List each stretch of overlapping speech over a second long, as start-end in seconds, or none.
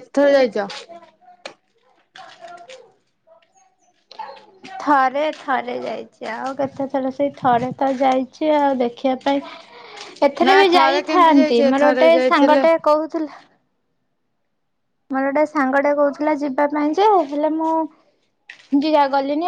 10.5-12.6